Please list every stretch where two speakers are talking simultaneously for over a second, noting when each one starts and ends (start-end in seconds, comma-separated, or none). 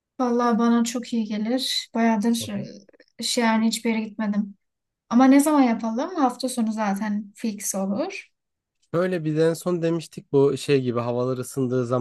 none